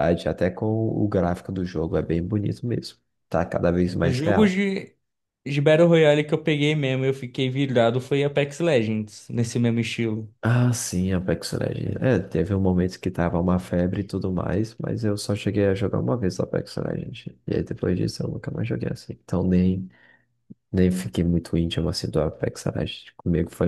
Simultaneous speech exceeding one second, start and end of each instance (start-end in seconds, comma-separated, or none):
none